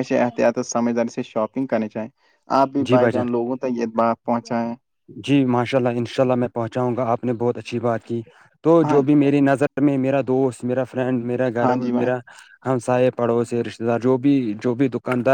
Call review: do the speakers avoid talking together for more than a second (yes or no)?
yes